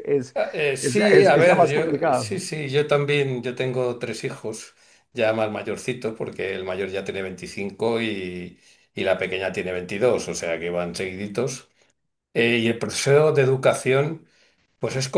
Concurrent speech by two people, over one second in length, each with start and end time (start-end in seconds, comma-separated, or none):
0.8-2.4